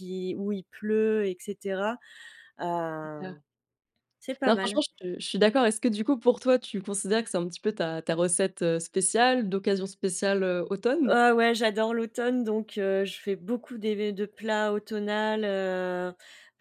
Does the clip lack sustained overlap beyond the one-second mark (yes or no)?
yes